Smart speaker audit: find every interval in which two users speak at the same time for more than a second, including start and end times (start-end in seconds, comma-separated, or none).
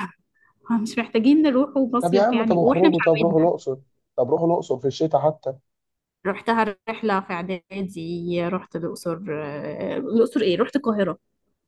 2.0-3.5